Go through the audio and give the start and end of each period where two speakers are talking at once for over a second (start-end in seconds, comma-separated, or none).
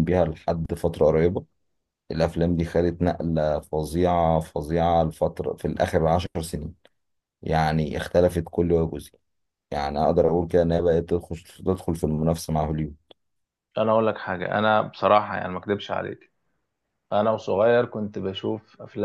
none